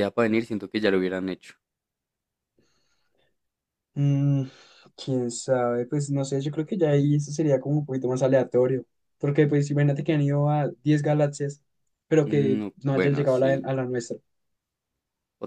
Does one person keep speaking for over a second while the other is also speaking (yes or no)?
yes